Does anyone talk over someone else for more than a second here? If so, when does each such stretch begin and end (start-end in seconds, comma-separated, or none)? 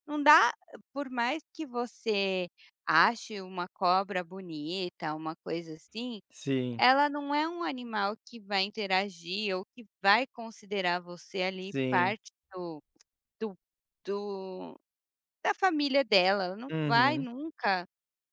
none